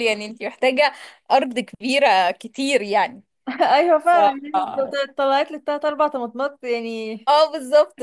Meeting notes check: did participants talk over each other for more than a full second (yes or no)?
no